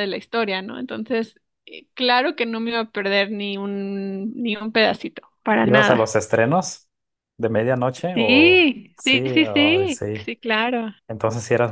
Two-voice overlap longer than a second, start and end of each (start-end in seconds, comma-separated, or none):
8.1-10.3